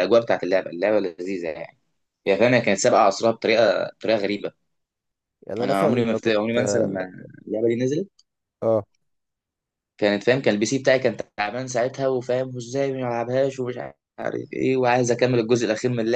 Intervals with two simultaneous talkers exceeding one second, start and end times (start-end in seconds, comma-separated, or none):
5.6-7.0